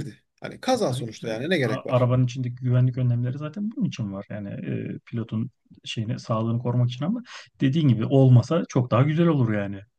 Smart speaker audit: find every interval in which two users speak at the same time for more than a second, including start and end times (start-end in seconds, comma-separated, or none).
0.7-2.1